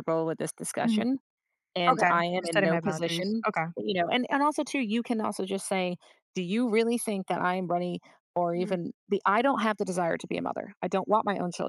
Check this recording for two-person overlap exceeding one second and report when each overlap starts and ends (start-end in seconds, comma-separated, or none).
1.9-3.7